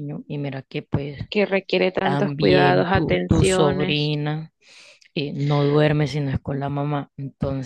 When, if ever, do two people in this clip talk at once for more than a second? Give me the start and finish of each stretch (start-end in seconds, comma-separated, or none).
2.0-4.1